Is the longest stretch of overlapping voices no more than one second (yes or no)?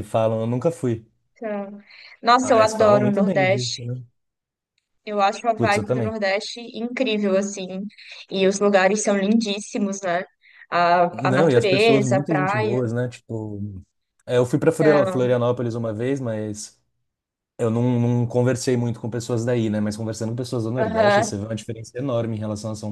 no